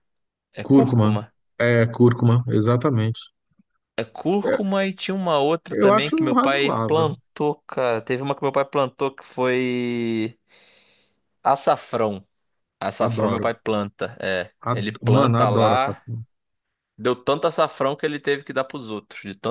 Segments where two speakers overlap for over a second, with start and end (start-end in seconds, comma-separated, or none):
5.7-7.1, 14.7-16.0